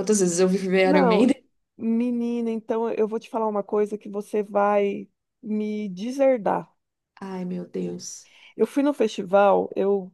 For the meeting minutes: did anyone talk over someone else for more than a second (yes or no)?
no